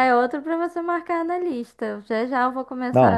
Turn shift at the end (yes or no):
yes